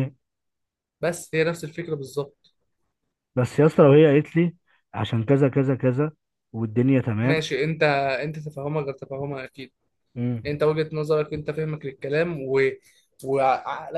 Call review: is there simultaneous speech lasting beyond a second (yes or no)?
no